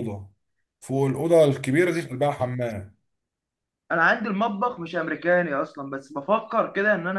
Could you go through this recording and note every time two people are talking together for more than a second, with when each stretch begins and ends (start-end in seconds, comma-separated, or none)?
none